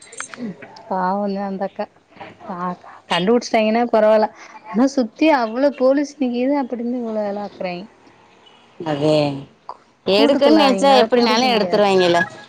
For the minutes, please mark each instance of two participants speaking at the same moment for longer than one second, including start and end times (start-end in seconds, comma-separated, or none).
10.2-11.9